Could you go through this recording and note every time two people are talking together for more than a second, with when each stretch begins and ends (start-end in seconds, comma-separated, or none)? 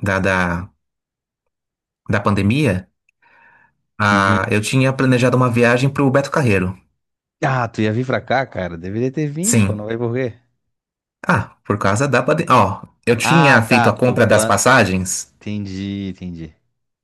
13.2-14.6